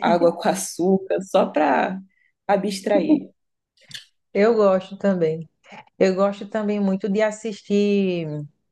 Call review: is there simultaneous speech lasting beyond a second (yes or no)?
no